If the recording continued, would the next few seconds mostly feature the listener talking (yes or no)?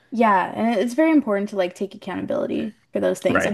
no